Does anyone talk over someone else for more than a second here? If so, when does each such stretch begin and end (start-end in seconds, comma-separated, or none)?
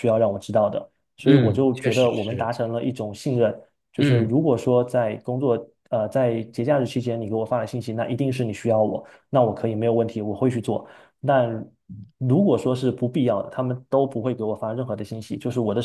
1.3-2.5